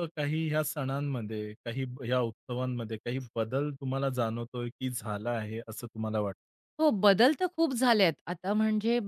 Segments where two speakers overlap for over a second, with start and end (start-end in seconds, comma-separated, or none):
none